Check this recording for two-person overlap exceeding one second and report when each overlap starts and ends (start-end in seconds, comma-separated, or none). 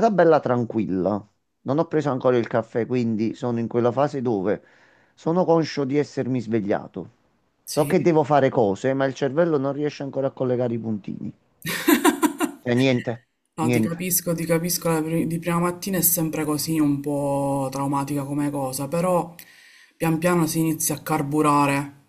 none